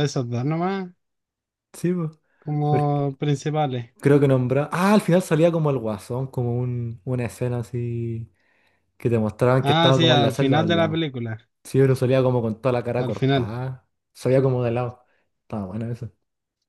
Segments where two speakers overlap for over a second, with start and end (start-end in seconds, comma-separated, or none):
9.6-11.1